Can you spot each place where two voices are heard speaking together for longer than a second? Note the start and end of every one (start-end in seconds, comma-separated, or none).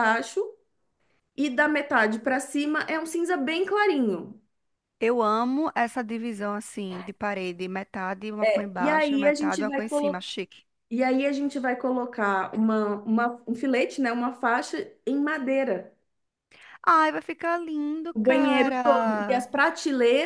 8.8-10.2, 18.1-19.4